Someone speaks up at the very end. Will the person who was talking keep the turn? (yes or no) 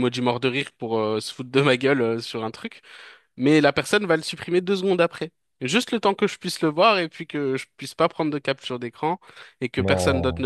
yes